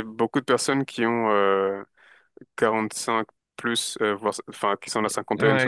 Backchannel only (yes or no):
no